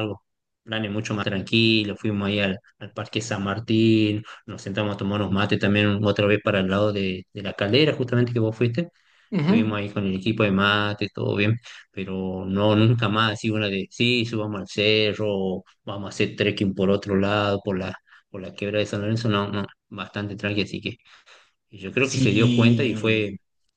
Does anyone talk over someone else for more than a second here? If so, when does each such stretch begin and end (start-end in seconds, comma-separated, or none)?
22.0-23.2